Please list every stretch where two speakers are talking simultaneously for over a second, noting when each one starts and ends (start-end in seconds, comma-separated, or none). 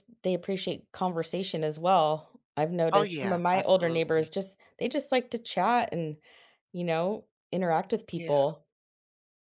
2.9-4.3